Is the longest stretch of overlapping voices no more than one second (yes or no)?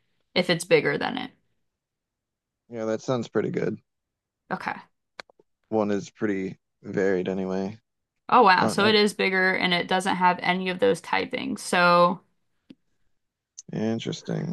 yes